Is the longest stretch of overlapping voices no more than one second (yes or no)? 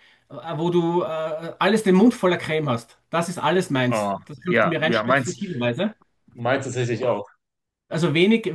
no